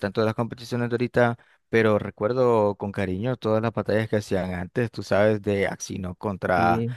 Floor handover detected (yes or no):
no